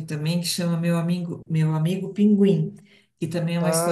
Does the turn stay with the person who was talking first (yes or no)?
yes